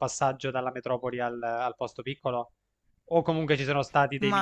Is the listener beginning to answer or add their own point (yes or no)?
no